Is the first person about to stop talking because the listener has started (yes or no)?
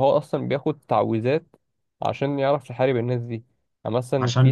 no